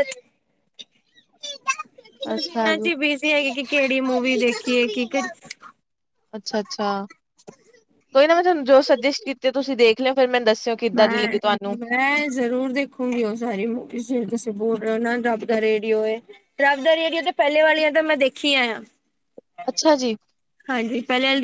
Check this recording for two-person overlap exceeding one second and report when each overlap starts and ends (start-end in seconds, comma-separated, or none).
none